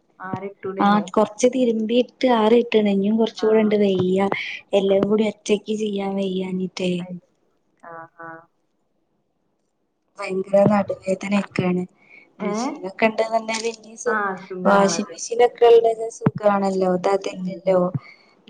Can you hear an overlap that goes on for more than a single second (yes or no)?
no